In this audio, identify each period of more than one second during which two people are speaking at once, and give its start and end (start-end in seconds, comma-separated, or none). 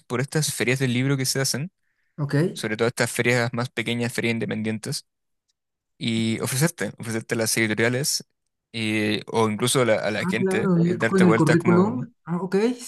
10.2-12.1